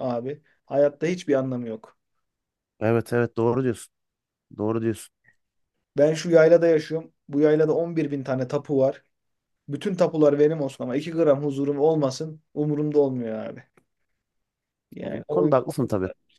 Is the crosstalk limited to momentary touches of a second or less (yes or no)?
yes